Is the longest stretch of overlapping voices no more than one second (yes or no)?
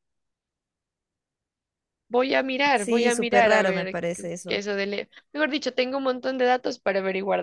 no